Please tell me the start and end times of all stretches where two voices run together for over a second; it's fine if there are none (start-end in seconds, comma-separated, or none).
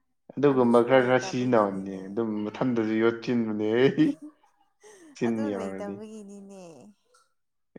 0.5-2.0